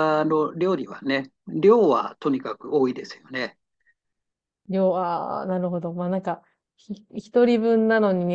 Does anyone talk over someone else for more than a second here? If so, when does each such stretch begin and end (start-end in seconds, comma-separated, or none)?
none